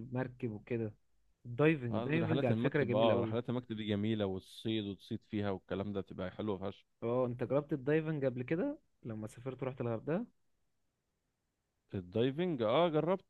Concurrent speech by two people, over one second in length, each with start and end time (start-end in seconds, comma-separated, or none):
1.9-3.4